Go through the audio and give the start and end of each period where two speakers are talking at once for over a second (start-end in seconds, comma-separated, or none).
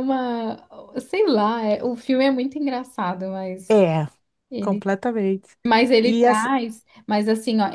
none